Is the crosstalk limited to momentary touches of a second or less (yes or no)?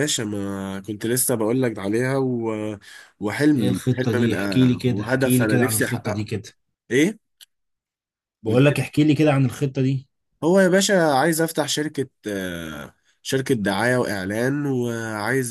no